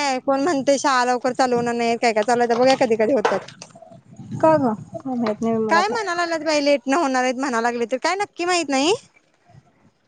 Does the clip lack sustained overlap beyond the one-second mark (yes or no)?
yes